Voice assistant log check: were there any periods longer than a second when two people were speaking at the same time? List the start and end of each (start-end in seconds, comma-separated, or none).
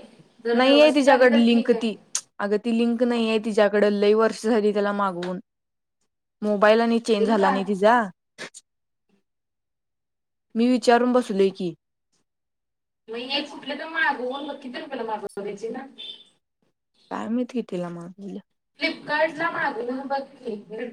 0.6-1.9